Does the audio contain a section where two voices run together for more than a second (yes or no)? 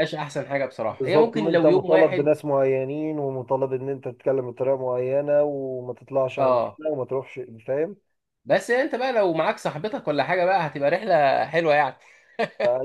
yes